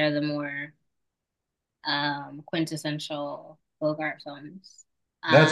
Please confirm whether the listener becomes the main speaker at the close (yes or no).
yes